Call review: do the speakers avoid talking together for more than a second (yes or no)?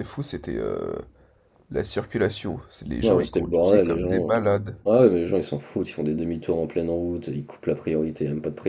no